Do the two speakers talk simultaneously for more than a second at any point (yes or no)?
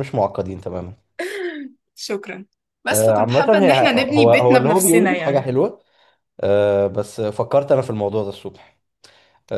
yes